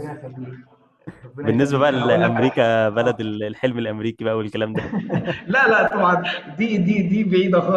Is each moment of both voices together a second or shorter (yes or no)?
no